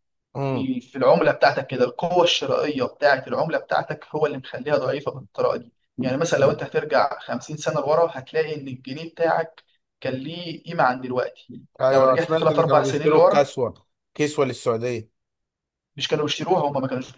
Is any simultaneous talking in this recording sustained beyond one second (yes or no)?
yes